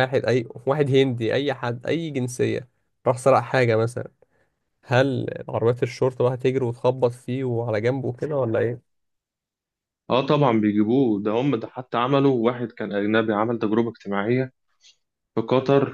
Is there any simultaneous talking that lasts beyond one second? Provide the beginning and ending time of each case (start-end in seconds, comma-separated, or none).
none